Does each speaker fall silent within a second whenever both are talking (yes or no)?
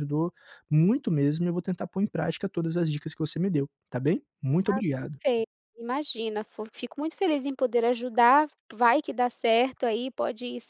yes